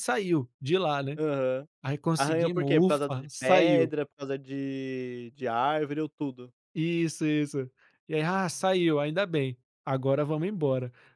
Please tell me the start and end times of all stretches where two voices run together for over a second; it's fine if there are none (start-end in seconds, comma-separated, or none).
2.1-3.9